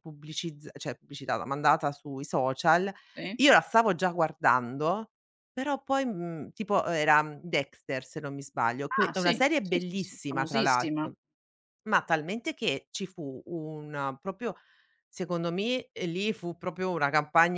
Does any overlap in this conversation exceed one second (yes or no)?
yes